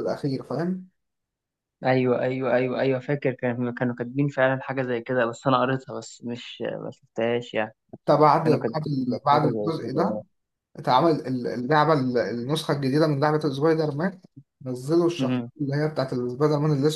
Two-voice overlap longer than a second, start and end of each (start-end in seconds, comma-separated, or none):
8.4-10.2